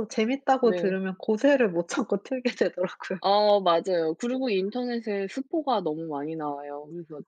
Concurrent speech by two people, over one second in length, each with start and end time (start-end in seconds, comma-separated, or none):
none